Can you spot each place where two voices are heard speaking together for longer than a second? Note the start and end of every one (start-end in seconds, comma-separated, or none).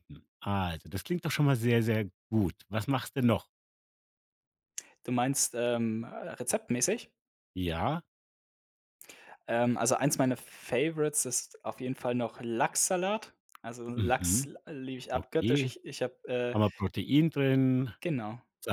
none